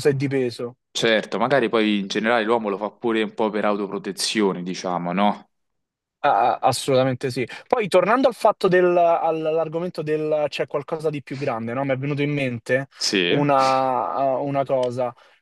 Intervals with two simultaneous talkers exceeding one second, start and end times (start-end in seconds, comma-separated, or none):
none